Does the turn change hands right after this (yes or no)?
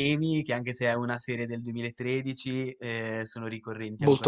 yes